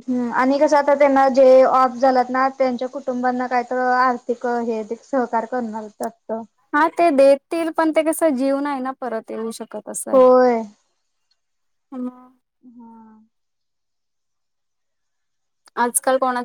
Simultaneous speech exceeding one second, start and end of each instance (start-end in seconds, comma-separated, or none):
none